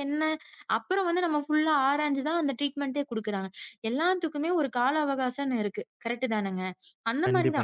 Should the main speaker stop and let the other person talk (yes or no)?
no